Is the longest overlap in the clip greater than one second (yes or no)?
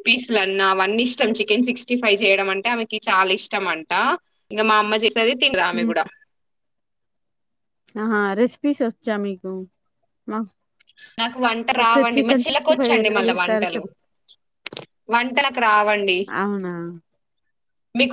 yes